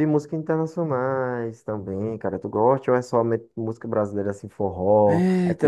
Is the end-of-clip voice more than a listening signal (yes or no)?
yes